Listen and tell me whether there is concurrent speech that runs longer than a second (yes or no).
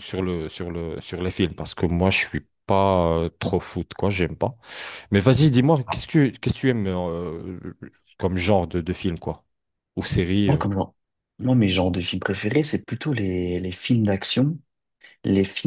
no